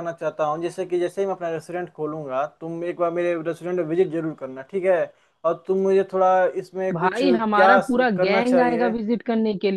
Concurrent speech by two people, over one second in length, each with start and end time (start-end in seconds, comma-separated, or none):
6.9-8.9